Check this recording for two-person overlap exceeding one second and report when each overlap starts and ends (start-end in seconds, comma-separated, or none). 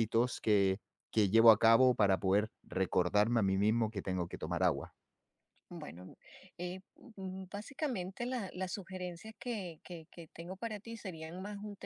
none